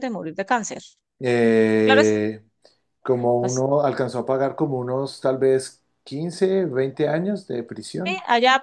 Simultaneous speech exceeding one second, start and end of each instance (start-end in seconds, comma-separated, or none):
none